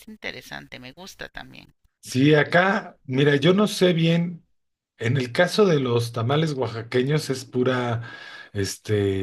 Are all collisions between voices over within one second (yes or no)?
yes